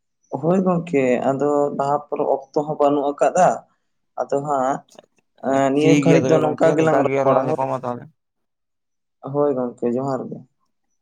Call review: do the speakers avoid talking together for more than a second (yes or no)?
no